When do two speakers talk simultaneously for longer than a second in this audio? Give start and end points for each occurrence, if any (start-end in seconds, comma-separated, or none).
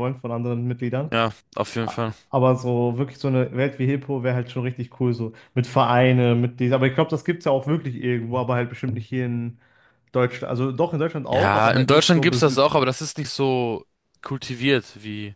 11.3-12.6